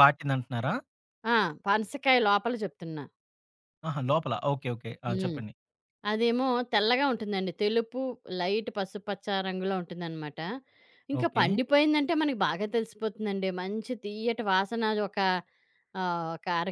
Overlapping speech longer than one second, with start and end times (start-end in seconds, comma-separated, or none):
none